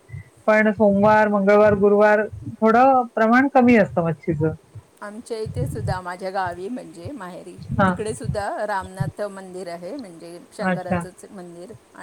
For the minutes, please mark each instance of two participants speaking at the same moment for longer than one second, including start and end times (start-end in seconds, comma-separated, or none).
none